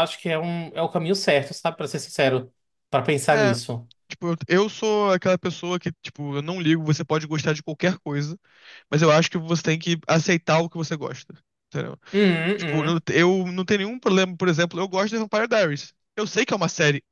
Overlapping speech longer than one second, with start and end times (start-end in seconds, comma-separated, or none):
none